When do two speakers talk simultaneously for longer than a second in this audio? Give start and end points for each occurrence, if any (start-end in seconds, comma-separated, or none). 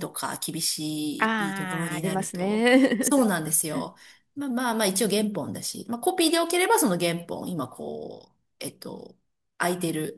1.2-3.1